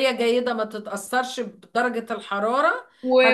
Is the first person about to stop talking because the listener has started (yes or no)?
yes